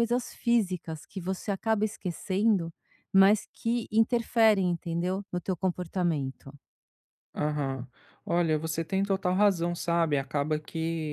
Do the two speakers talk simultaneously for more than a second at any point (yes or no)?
no